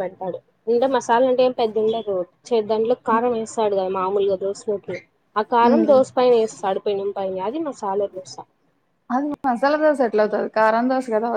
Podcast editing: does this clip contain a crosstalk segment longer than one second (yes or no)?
no